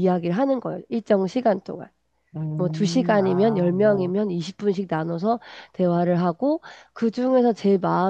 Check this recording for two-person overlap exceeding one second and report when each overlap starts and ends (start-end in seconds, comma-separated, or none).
2.6-4.1